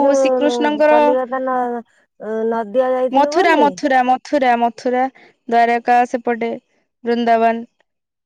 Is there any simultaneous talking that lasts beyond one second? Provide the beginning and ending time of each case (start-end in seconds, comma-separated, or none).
none